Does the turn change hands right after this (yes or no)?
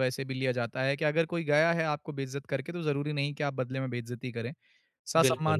no